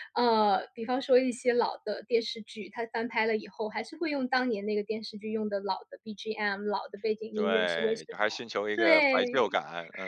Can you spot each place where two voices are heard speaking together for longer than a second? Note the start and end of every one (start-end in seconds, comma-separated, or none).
7.3-9.6